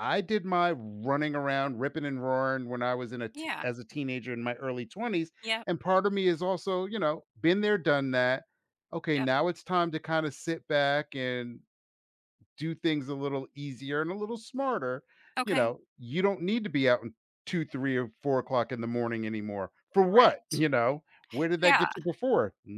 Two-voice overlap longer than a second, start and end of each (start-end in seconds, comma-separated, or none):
none